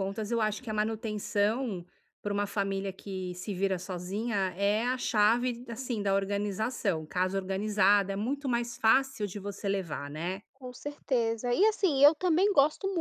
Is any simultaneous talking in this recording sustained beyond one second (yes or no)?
no